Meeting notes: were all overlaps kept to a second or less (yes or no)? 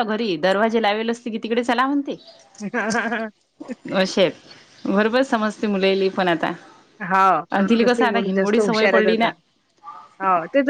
no